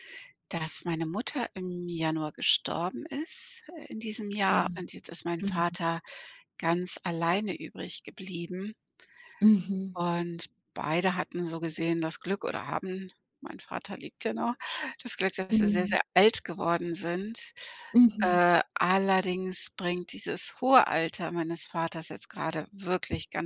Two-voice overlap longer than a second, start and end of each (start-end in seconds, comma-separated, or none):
none